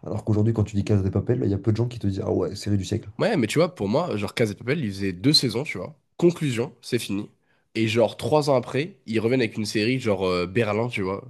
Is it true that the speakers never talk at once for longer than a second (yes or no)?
yes